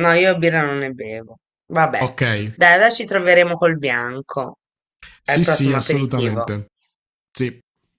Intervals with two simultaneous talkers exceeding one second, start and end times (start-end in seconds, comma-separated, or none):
5.2-6.5